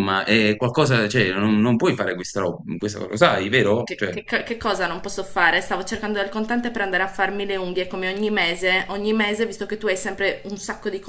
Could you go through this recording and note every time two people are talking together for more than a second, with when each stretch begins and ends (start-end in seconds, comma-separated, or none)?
none